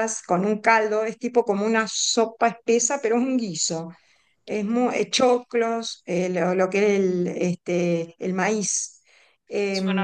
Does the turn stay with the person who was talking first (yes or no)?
yes